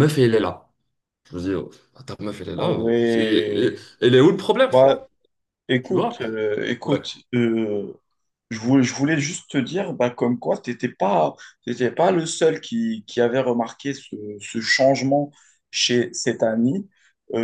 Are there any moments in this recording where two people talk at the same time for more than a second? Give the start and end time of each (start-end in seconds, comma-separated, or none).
2.6-3.8